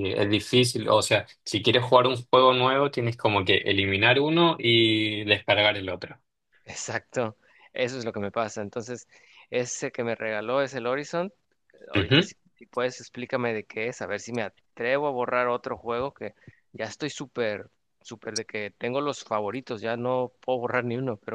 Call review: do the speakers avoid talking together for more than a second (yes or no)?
yes